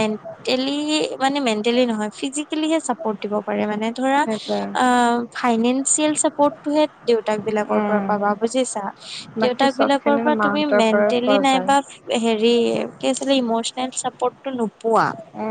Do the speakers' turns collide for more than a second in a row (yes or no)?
yes